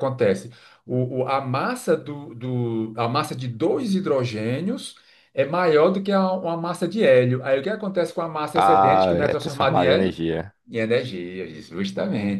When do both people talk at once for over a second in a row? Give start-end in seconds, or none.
8.5-10.2